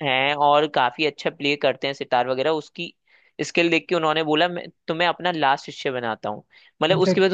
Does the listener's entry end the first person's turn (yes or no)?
no